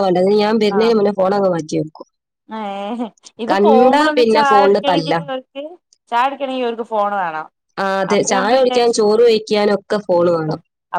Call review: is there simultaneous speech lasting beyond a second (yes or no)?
yes